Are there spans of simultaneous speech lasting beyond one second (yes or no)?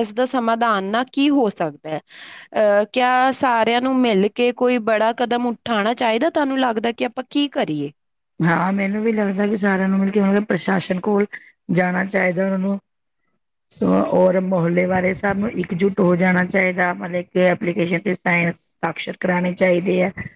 no